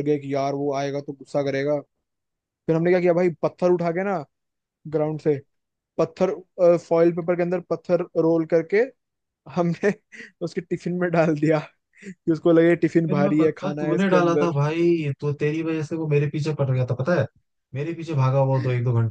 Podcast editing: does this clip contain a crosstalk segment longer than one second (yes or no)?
yes